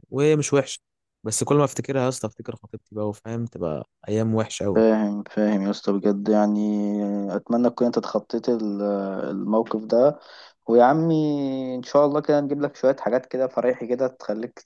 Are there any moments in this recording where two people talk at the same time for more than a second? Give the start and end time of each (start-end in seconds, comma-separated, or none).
none